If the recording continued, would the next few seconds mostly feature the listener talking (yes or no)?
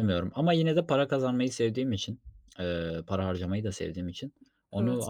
no